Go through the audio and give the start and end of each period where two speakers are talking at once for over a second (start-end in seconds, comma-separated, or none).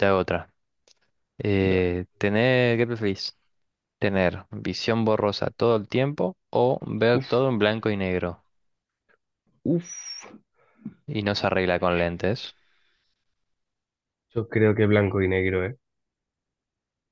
none